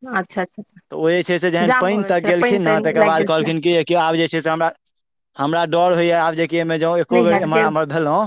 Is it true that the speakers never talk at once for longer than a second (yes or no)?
no